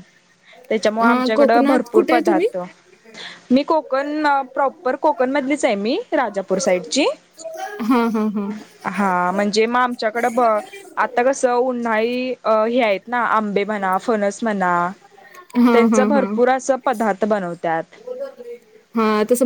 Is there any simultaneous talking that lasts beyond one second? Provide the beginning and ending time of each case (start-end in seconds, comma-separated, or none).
1.1-2.5